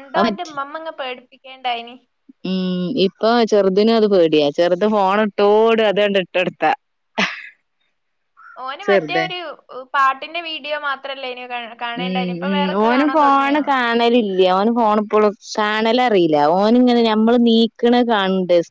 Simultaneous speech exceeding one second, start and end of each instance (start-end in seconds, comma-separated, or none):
none